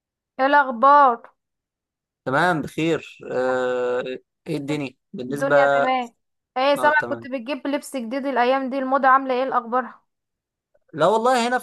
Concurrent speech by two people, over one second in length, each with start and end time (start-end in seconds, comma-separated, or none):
none